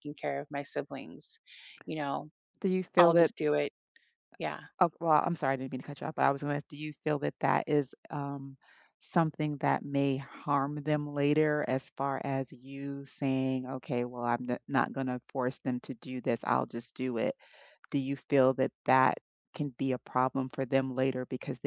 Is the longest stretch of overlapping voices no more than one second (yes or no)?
yes